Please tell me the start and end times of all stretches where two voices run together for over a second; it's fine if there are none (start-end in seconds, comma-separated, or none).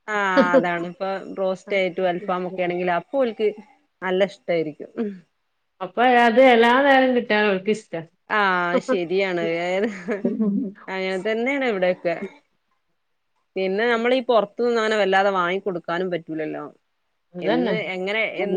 none